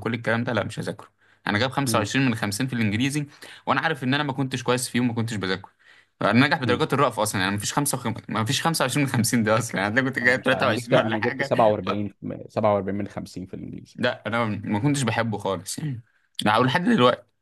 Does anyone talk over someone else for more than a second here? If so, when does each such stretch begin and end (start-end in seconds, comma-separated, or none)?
10.2-11.5